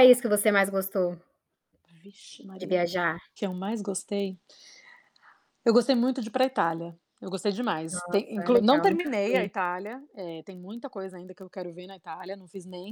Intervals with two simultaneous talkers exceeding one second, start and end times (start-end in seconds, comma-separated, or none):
7.9-9.5